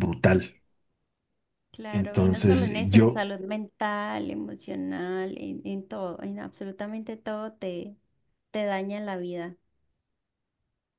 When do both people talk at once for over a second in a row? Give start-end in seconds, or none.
1.9-3.2